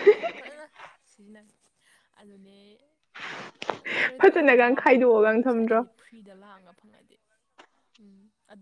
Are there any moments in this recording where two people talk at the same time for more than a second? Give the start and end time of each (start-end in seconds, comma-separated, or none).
4.2-5.8